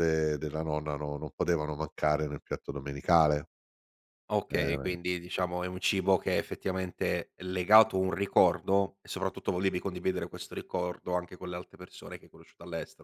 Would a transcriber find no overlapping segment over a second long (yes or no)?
yes